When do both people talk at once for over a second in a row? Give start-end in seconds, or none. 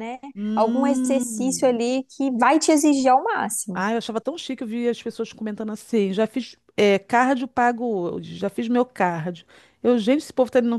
0.5-1.8